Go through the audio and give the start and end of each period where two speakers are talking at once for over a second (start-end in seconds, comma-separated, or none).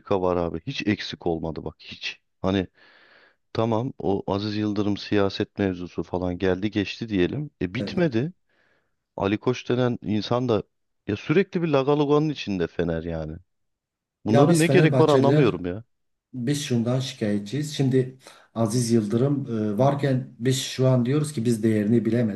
14.3-15.6